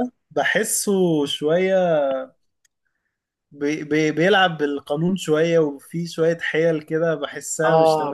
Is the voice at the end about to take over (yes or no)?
yes